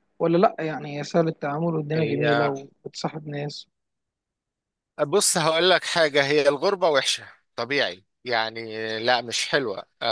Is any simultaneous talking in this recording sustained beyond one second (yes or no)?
no